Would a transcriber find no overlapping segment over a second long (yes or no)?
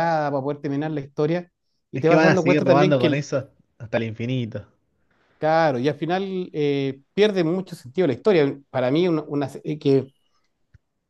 no